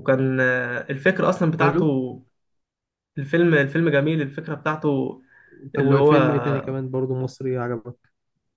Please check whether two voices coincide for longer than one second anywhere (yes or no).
no